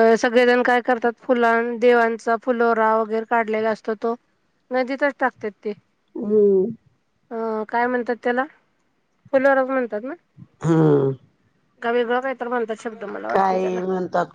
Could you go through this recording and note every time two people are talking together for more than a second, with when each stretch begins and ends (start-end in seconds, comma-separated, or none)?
none